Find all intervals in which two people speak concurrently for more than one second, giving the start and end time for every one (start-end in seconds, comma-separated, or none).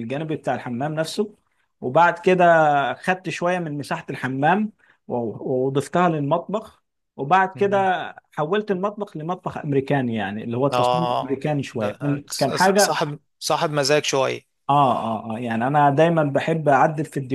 10.7-12.9